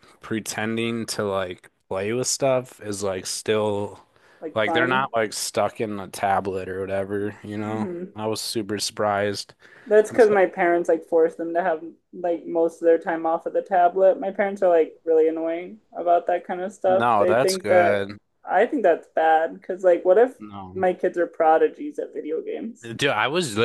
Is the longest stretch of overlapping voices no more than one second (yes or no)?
no